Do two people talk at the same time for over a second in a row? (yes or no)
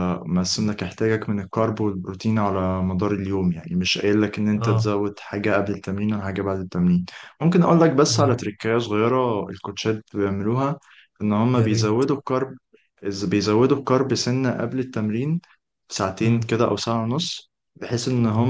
no